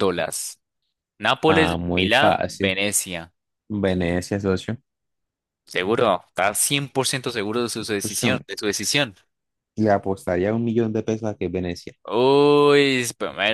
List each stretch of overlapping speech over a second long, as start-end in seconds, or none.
1.5-2.8